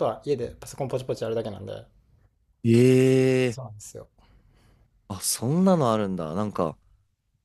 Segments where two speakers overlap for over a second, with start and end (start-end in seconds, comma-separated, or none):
none